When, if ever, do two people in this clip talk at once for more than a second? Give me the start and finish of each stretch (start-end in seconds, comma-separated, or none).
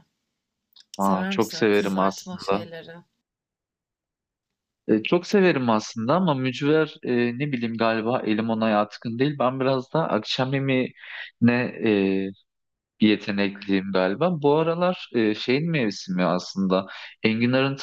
1.0-2.7